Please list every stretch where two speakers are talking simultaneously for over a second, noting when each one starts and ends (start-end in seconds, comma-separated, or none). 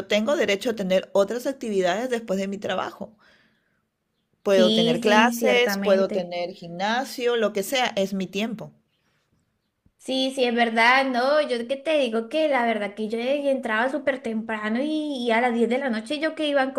4.5-6.3